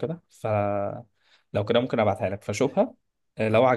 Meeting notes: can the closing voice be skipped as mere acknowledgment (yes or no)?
yes